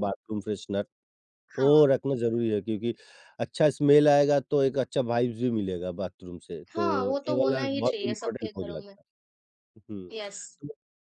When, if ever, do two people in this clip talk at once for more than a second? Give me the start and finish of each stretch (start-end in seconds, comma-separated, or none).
6.7-8.9